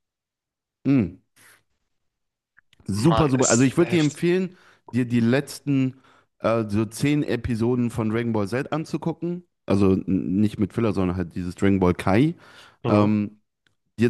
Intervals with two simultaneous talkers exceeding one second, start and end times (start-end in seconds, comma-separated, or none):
3.0-4.2